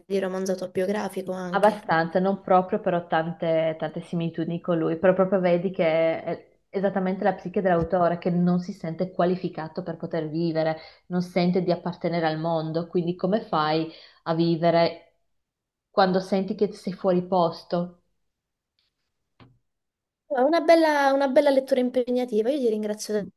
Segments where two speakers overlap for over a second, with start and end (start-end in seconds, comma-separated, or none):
none